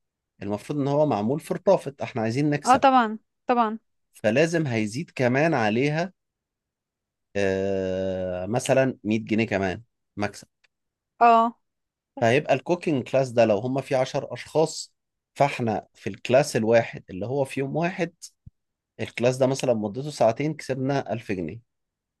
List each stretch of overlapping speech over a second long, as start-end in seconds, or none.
none